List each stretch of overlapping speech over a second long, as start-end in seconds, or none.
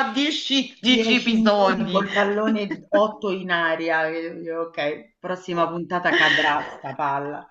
0.8-2.0